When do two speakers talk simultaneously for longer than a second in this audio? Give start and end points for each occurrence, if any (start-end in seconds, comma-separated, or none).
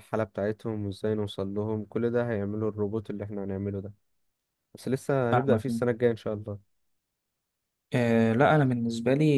none